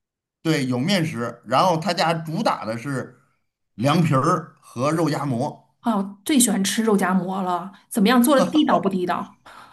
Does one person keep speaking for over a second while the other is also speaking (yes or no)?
no